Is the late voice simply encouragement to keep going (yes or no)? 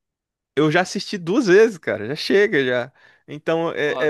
yes